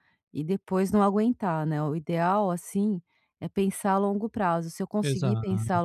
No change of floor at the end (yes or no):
yes